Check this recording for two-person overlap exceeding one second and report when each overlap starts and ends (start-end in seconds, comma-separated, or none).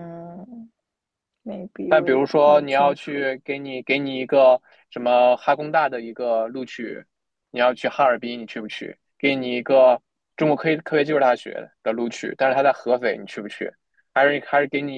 1.9-3.3